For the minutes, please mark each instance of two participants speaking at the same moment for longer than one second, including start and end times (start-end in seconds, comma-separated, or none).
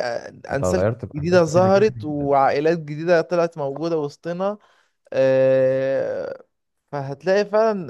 0.5-2.3